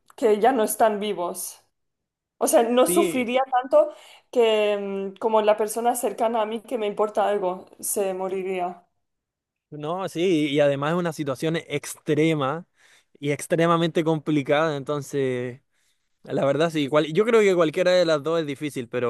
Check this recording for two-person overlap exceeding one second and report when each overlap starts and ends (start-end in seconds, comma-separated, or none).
none